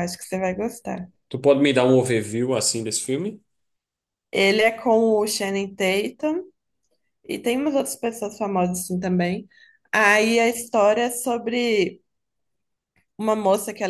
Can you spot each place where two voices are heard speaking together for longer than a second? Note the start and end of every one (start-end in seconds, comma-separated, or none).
none